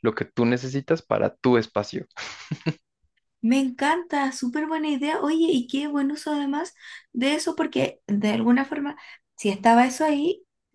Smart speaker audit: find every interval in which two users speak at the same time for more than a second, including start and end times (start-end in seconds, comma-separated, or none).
none